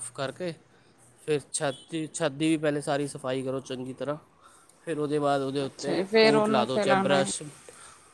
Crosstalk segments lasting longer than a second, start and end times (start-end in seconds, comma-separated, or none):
5.7-7.3